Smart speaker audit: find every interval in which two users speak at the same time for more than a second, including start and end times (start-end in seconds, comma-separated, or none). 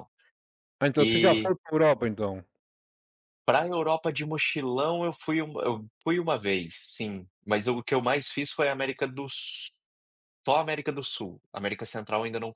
none